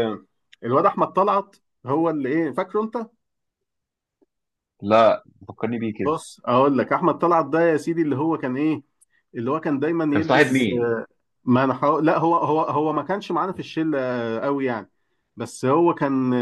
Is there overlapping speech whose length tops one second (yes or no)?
no